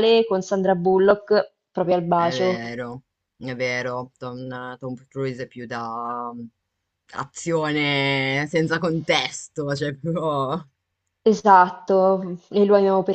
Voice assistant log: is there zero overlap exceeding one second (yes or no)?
yes